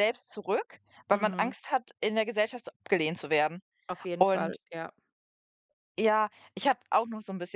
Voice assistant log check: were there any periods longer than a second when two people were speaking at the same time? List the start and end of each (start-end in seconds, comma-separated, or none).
none